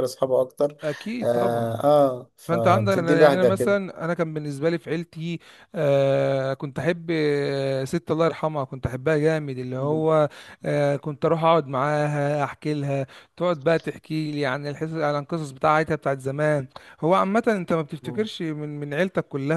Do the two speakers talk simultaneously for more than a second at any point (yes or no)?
yes